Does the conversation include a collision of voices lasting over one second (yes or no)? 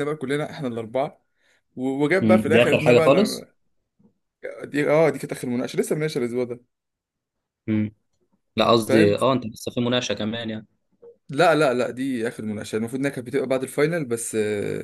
yes